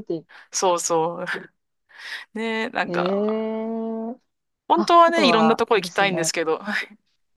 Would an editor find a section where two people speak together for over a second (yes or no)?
yes